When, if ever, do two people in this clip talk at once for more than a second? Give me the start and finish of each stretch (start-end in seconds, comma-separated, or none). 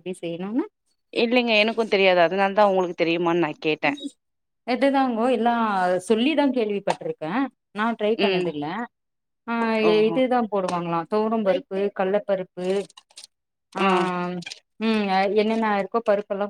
none